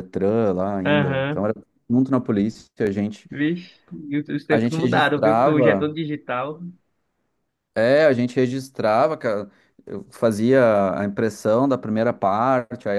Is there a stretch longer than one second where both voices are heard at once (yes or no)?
yes